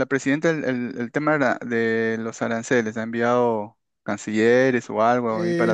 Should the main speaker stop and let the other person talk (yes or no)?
yes